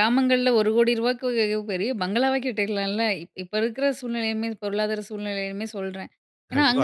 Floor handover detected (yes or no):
yes